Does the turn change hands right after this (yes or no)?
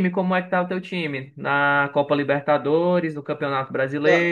yes